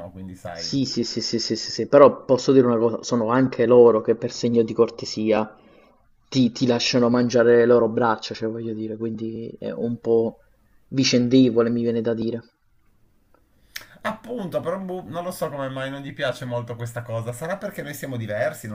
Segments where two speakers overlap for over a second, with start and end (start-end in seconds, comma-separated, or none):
none